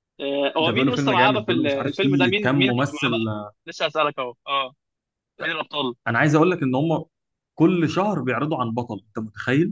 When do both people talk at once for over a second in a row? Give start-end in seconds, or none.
0.6-3.1